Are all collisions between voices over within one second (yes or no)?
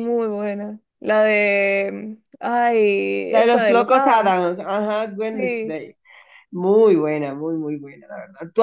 no